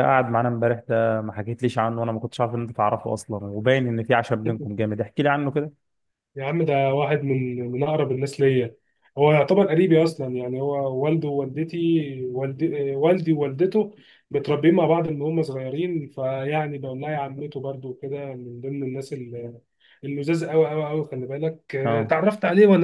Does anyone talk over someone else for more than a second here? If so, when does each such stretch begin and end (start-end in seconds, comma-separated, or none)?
none